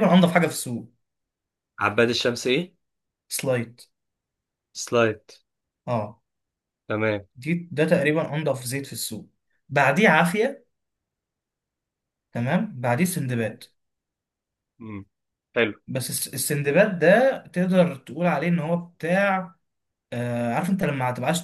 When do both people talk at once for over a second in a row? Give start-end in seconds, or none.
none